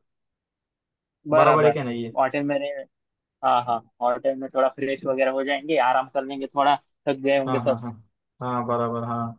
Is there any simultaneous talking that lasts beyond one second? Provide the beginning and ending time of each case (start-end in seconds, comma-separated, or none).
none